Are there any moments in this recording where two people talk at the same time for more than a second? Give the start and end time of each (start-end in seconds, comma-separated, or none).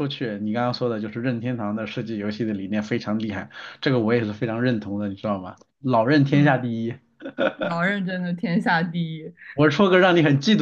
none